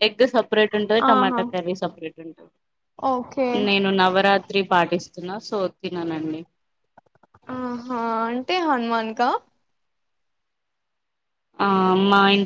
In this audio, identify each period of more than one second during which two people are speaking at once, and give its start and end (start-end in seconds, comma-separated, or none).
none